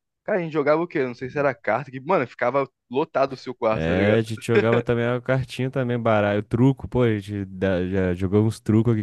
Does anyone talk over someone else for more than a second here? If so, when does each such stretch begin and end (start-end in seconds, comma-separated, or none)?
none